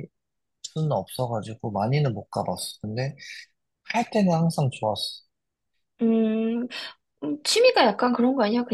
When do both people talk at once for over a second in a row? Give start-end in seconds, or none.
none